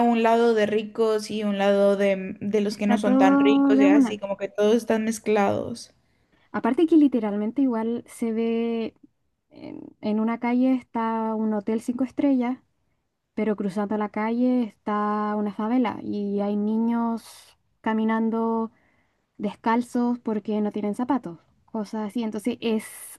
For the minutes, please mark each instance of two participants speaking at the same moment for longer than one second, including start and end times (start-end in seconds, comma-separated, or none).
2.7-4.2